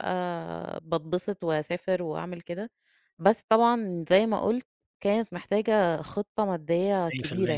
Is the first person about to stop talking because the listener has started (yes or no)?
yes